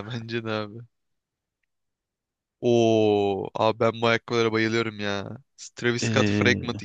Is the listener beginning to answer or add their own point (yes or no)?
no